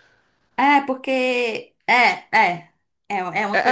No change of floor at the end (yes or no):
no